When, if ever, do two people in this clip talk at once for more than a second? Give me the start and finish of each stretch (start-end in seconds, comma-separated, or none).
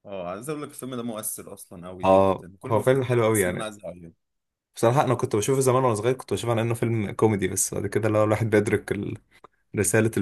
2.0-3.7